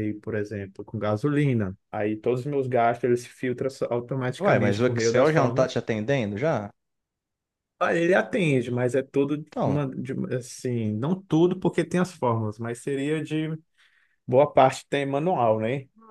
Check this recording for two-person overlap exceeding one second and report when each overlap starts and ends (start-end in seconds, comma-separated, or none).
4.4-5.8